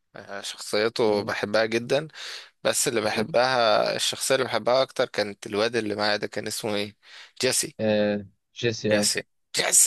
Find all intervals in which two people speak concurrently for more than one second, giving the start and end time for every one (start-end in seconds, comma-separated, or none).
none